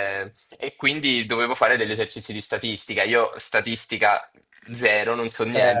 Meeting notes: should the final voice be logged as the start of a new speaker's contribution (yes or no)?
no